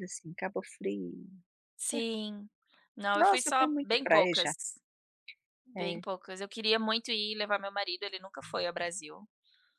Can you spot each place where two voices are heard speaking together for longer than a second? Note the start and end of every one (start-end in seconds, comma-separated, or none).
3.2-4.5